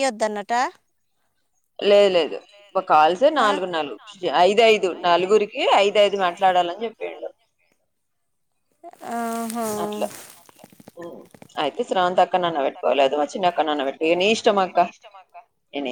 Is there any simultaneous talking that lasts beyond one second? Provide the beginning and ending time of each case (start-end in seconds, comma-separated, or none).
12.2-14.8